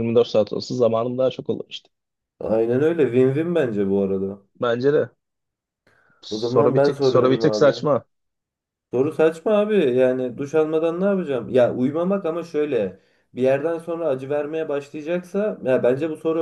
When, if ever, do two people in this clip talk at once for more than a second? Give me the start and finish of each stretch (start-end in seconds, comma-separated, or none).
6.3-7.8